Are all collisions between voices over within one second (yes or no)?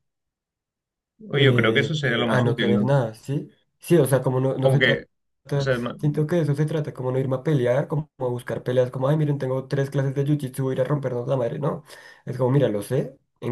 no